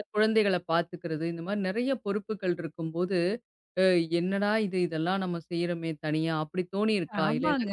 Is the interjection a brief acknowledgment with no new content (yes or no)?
no